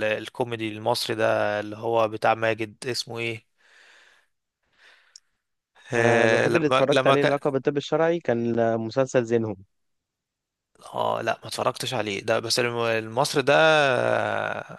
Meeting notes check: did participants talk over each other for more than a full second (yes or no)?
yes